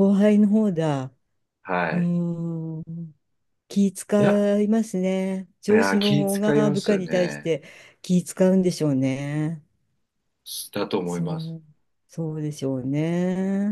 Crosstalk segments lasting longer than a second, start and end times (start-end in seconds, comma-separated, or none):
5.7-7.5